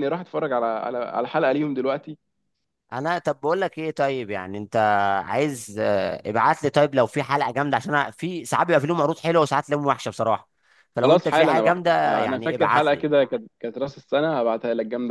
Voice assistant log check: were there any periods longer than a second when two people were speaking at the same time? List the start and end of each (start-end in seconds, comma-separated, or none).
11.0-13.1